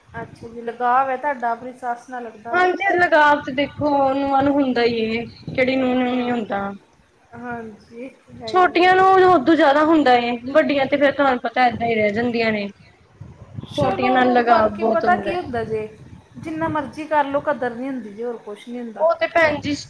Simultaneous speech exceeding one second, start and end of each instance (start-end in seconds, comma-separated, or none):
13.8-15.4